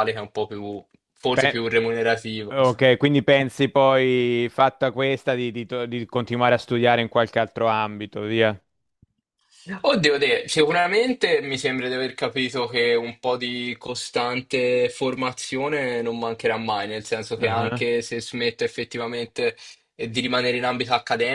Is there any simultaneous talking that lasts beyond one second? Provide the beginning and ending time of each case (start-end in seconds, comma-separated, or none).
none